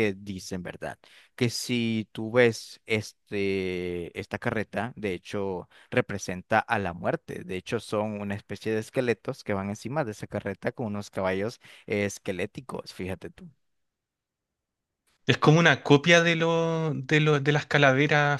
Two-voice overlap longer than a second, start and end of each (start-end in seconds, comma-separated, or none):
none